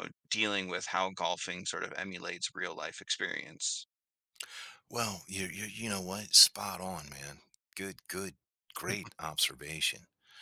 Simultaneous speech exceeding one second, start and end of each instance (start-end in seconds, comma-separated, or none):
none